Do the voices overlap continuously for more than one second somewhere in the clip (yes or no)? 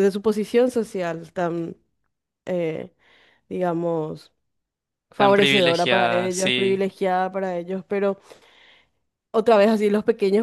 yes